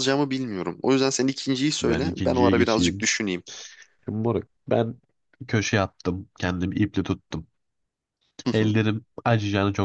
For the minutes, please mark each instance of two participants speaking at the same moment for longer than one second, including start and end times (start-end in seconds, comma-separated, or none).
1.8-3.1